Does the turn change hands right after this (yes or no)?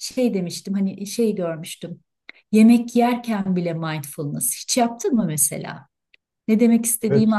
yes